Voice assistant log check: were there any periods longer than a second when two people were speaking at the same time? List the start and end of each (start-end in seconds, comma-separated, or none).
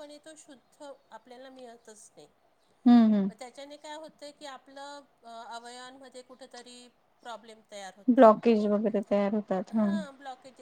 none